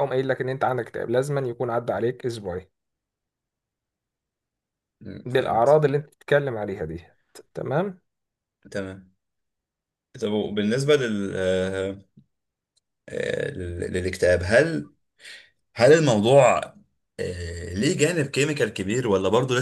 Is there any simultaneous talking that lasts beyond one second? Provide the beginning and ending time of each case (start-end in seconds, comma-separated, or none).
none